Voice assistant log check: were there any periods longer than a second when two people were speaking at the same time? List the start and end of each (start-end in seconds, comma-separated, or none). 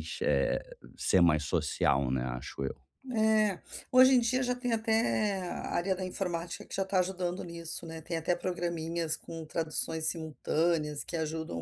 none